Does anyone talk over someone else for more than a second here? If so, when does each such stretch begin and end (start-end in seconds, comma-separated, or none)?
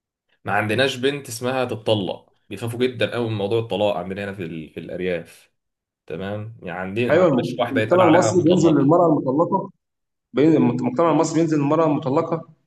7.1-8.9